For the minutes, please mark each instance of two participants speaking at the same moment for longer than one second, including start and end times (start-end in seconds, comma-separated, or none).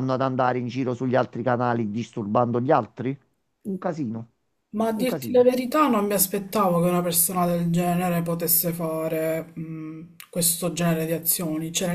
none